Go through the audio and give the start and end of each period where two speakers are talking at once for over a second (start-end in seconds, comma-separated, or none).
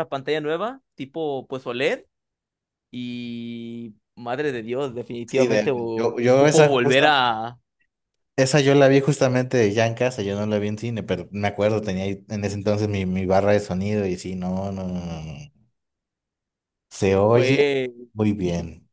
5.3-7.1